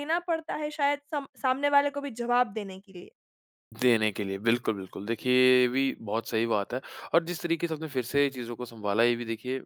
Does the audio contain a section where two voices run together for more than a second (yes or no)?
no